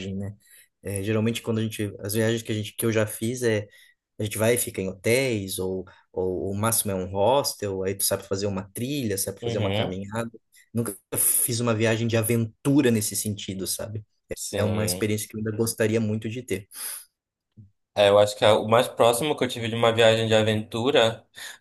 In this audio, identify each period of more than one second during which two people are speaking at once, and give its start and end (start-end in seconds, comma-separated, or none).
none